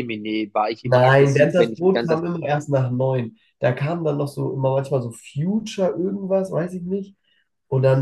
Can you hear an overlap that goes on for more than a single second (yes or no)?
yes